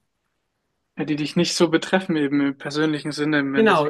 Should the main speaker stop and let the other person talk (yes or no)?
yes